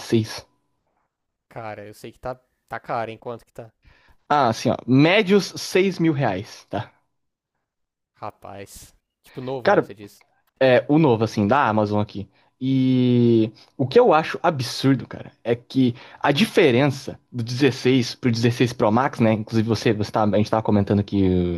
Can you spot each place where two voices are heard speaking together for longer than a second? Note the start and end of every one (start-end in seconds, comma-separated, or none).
none